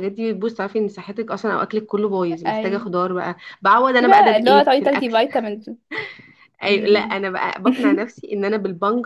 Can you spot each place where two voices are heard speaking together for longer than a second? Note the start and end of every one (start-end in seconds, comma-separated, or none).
4.0-5.2